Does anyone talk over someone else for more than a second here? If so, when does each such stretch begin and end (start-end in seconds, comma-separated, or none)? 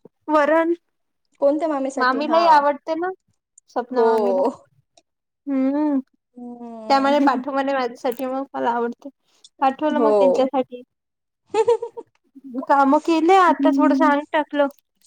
none